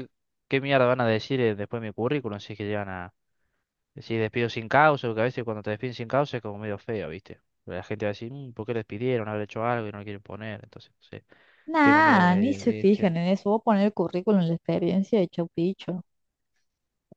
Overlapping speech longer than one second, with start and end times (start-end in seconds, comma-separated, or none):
11.8-13.2